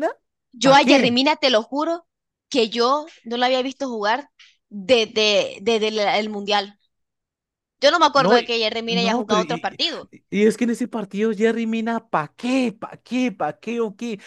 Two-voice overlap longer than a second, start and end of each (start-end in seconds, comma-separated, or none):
8.1-10.1